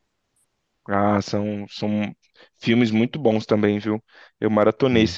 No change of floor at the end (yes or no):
yes